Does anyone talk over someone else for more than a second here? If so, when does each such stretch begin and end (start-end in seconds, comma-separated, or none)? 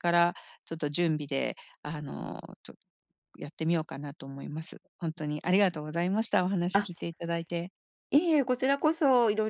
none